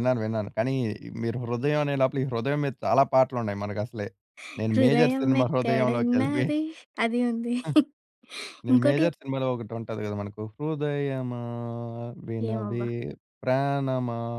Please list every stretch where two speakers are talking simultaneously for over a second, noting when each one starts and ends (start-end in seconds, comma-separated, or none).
4.7-6.5